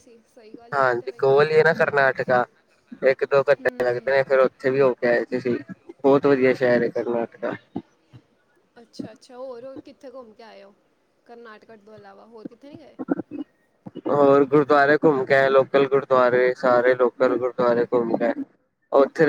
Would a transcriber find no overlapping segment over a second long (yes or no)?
yes